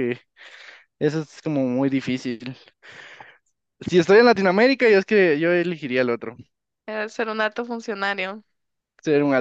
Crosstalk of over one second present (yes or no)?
no